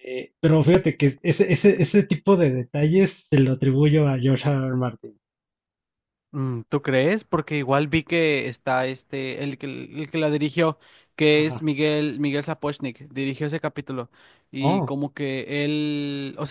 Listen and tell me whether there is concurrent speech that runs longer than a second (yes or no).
no